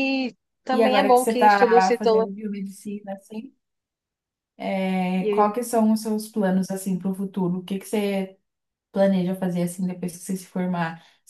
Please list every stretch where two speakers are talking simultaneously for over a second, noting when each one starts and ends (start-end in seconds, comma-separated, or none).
0.7-2.3